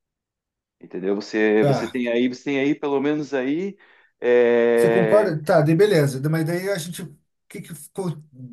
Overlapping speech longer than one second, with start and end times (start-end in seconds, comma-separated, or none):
none